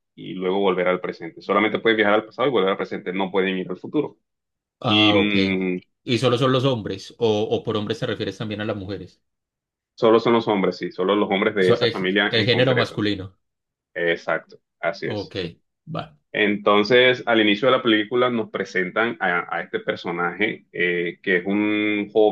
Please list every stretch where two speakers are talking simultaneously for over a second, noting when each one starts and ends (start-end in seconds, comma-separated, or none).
11.6-13.0